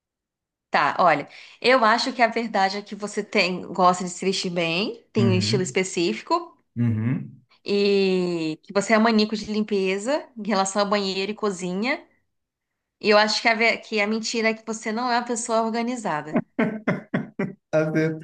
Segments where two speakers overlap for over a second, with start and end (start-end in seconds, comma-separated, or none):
none